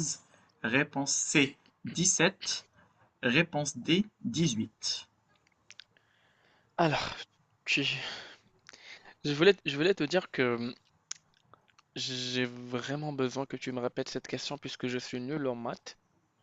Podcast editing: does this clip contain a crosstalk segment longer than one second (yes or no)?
no